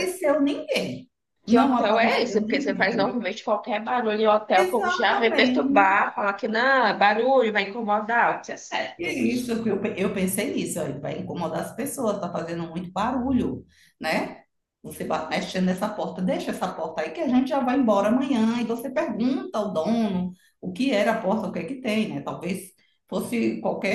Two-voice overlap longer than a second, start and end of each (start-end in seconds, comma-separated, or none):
1.5-3.1, 4.6-6.0